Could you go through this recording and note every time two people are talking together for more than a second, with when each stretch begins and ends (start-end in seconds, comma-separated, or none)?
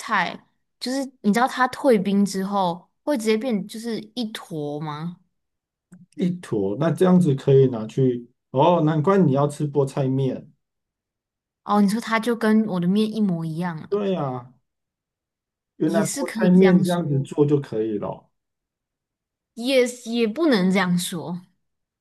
15.8-17.2